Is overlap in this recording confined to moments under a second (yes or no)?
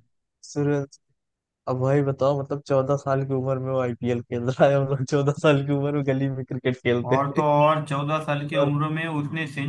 yes